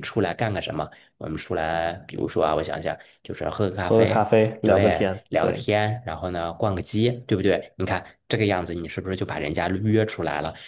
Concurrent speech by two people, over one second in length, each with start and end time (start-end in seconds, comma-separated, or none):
3.9-5.7